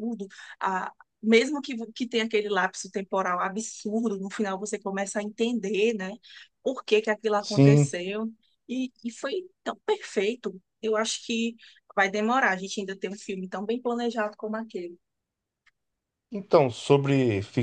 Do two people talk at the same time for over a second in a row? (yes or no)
no